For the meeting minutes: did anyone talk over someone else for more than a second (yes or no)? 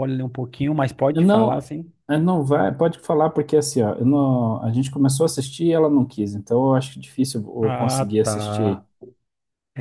yes